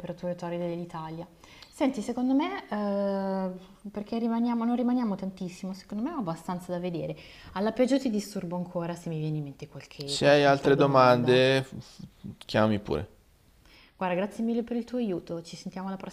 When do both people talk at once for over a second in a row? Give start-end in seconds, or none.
10.1-11.4